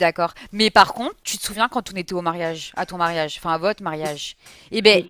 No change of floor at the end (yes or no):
yes